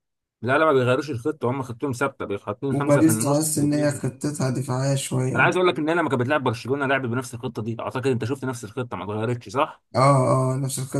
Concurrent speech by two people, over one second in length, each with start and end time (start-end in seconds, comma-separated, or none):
2.7-4.0